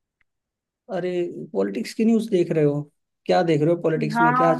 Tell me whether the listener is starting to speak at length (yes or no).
yes